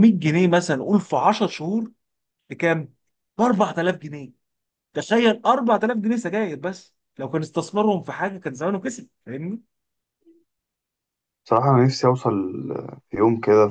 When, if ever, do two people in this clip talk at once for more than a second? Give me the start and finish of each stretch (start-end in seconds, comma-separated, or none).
none